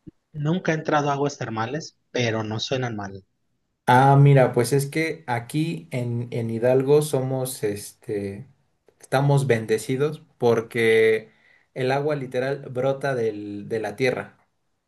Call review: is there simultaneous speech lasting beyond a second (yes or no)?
no